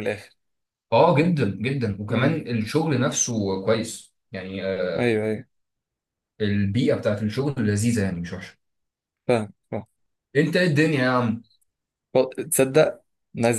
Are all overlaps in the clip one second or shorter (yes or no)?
yes